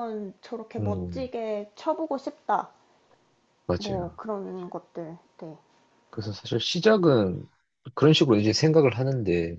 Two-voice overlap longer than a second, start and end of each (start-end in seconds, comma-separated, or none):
none